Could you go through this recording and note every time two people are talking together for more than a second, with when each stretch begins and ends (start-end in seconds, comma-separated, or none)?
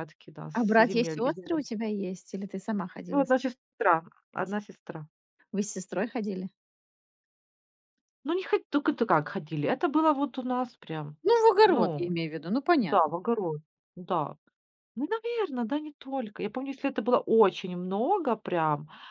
0.5-1.8